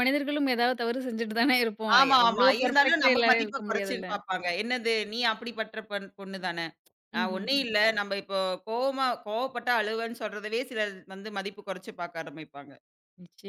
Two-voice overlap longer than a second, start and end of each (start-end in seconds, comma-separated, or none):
2.0-4.1